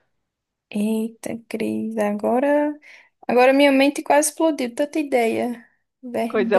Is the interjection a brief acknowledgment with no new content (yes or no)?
no